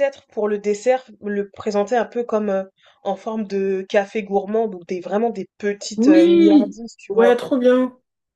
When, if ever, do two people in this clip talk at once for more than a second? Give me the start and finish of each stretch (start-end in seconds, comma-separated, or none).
6.0-7.4